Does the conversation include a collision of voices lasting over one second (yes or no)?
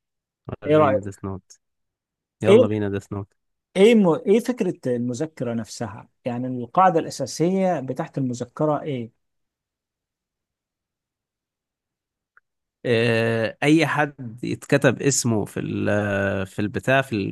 no